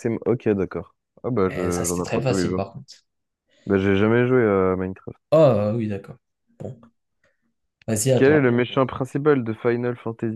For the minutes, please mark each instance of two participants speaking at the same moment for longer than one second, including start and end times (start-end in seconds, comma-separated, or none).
1.5-2.7